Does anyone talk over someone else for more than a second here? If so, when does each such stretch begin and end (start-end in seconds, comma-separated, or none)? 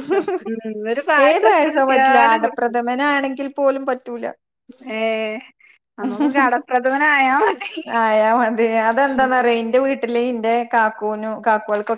1.3-2.8